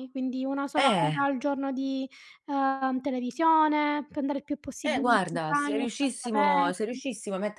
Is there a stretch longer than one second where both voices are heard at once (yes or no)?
yes